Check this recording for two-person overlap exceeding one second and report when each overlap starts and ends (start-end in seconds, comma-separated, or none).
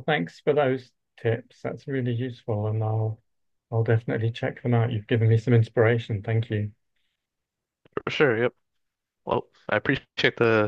none